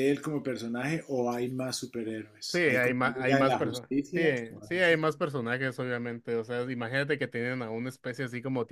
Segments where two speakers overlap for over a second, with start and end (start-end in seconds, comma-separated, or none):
2.5-4.2